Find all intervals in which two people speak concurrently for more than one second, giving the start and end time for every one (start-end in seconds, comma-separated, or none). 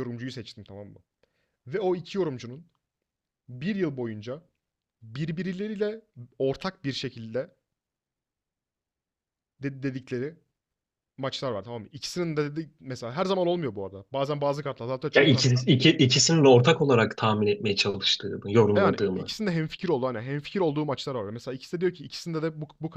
none